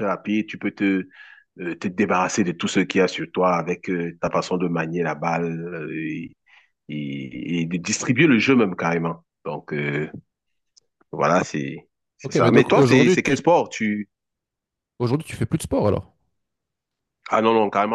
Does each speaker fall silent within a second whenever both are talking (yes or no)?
no